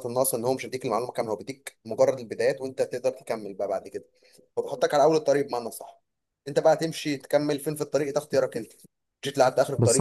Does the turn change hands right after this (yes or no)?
yes